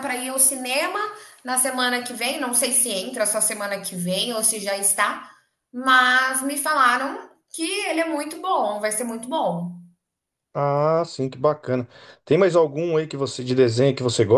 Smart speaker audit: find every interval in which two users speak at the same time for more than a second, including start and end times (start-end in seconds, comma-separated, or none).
none